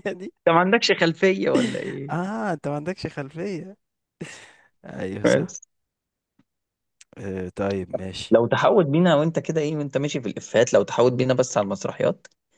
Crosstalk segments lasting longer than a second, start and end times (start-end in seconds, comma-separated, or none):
none